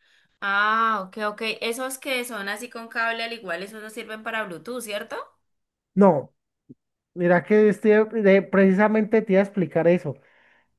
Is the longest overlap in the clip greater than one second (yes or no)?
no